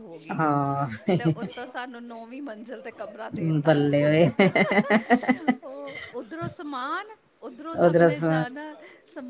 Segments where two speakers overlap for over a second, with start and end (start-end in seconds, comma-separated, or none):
none